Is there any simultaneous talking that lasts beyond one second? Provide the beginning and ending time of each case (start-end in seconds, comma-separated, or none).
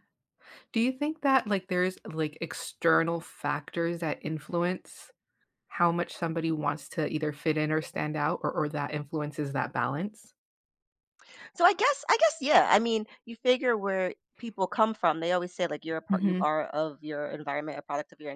none